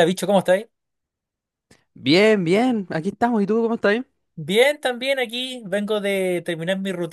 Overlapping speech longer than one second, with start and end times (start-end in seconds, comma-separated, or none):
none